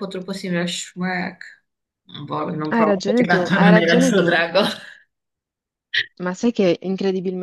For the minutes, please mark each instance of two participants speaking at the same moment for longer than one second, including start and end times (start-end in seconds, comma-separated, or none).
2.7-4.3